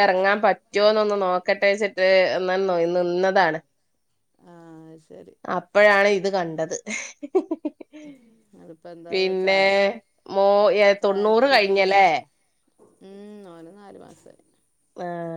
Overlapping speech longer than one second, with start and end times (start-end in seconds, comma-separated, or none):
none